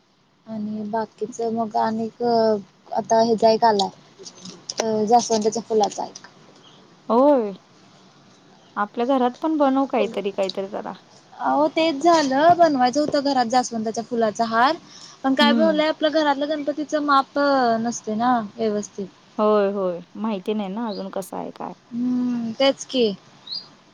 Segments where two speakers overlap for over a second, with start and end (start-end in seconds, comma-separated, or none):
none